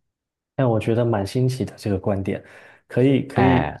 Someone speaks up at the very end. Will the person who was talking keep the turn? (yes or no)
yes